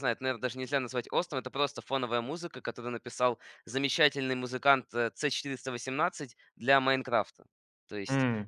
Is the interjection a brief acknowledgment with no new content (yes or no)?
yes